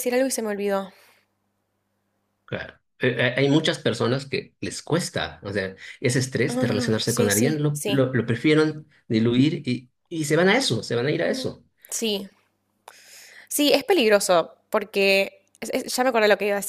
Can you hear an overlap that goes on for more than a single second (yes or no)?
yes